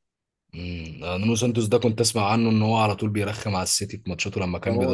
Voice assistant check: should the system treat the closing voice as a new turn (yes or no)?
yes